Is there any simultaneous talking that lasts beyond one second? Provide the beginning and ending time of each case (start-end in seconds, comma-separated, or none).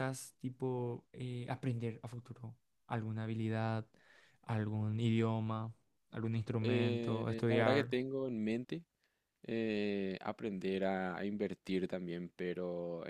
6.6-7.9